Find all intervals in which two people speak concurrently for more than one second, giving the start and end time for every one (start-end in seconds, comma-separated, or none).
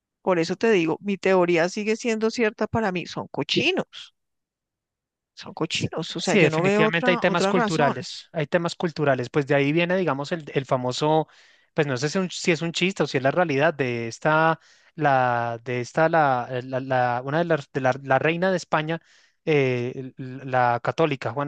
5.7-7.9